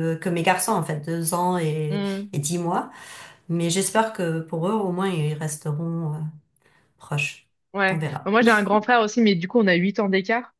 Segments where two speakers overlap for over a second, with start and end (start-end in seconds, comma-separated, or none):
none